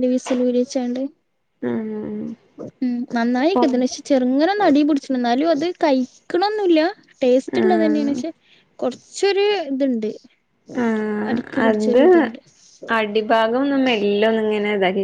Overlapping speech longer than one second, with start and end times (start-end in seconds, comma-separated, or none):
none